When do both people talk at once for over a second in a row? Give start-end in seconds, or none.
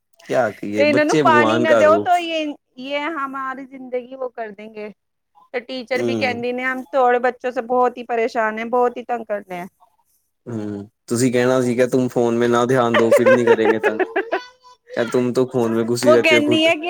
0.8-2.1